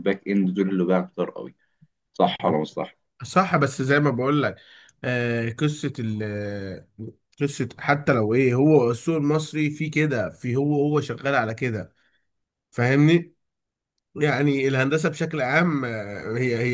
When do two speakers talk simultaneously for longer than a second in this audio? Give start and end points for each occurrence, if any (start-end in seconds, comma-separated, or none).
none